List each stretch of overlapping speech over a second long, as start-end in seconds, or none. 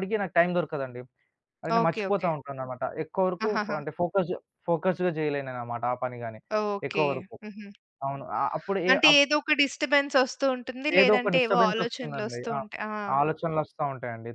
11.0-12.6